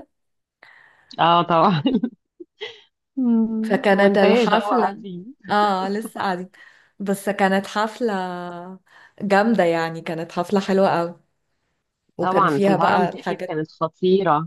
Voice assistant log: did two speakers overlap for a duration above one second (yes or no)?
yes